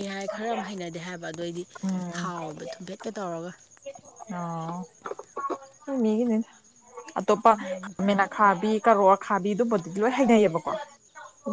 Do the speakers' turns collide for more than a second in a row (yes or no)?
no